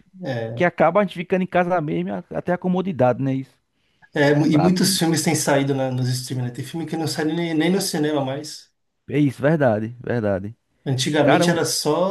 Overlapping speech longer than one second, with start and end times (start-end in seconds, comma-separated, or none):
none